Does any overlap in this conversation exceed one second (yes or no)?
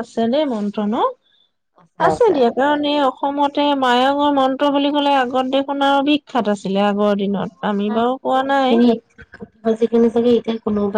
no